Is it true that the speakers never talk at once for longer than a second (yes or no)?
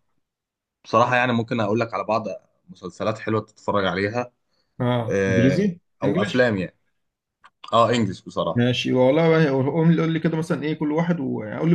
no